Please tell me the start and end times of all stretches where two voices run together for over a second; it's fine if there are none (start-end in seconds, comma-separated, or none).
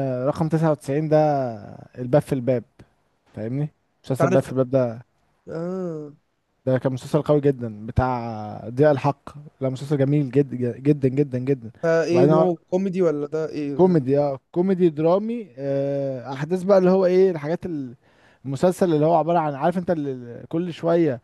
none